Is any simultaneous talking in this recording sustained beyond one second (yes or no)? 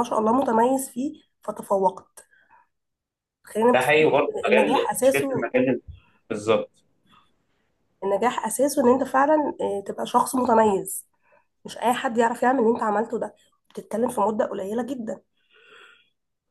yes